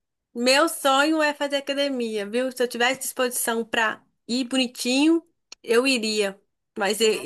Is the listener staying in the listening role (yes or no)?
yes